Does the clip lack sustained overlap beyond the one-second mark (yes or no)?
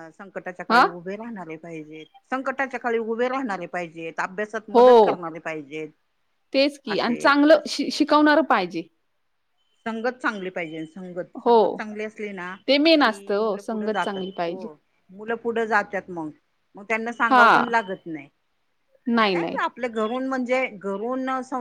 no